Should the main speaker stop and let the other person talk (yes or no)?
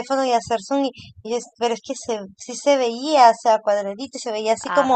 no